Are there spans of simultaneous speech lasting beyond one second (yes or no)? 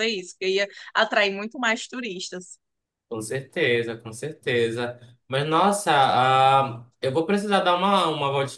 no